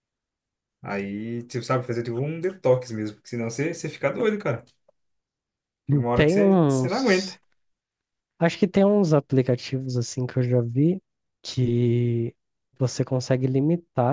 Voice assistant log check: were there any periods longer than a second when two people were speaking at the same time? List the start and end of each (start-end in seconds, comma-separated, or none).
5.9-7.4